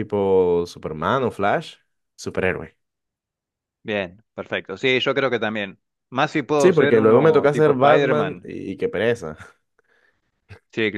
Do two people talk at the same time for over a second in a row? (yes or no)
yes